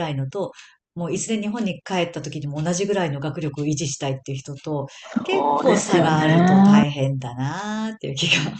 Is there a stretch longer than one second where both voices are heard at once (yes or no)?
yes